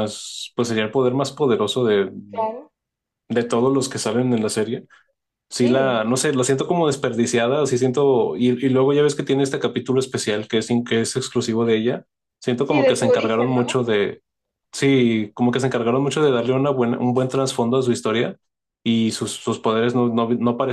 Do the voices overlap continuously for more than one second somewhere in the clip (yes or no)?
yes